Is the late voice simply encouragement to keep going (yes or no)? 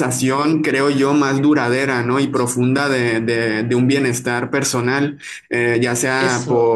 yes